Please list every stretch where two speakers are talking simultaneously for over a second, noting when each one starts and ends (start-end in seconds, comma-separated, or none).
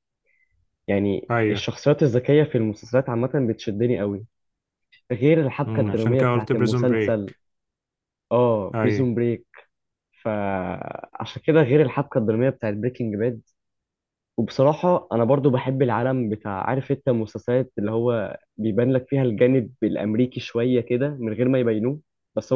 5.7-7.3